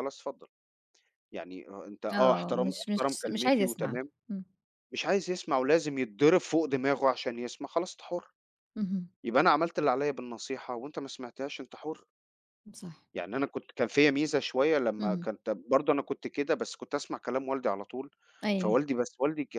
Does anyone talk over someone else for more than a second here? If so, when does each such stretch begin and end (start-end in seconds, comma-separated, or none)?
2.1-4.1